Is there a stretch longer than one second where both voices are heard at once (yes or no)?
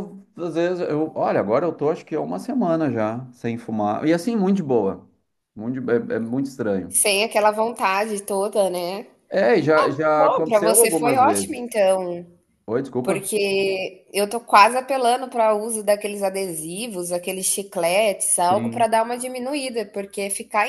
yes